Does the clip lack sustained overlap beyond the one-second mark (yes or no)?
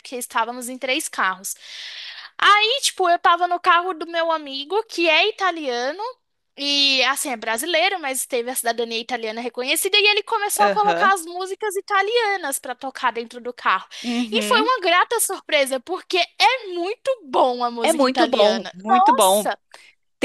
no